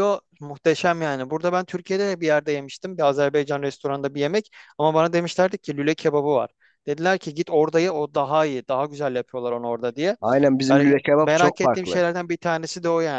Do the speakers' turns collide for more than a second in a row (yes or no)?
yes